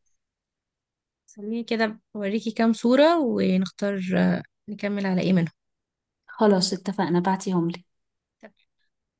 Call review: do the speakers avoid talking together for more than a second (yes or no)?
yes